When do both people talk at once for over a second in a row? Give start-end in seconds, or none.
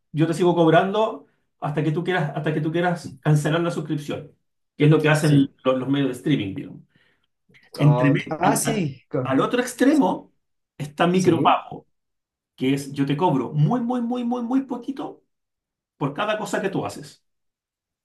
7.8-9.3